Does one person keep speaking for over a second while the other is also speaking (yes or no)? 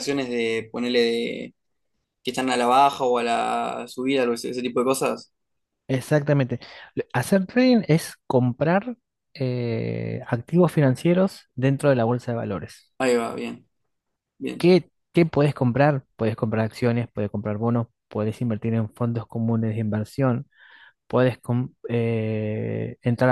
no